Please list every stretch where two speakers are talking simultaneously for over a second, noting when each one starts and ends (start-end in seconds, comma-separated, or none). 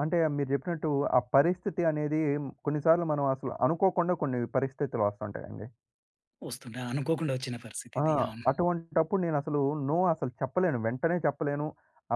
none